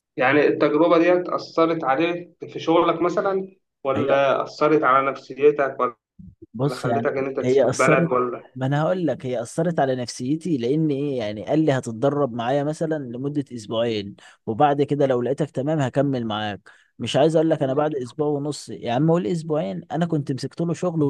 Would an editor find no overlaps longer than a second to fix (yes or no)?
no